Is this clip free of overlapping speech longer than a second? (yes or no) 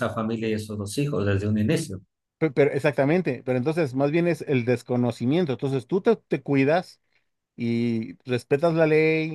yes